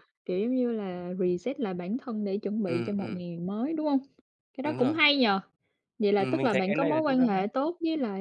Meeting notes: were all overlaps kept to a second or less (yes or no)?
no